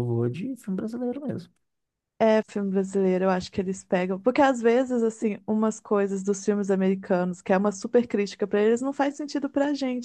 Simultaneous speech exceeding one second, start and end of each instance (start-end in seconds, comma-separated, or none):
none